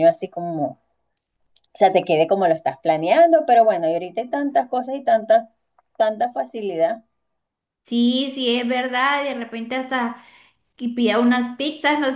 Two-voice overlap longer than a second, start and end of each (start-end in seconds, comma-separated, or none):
none